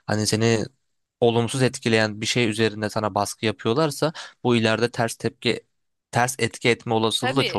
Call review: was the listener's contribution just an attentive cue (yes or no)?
no